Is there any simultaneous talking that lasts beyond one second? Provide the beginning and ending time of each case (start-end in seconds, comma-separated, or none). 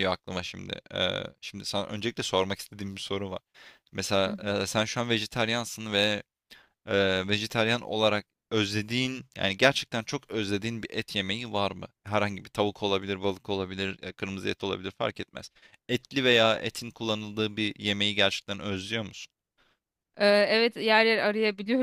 none